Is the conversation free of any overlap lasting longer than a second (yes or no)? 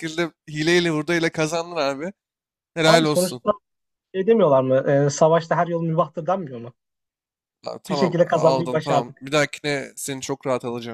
no